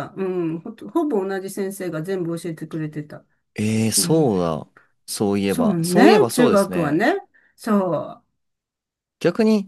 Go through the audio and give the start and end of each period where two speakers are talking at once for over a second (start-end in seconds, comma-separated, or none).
5.5-7.0